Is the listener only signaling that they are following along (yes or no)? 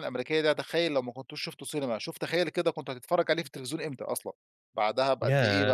no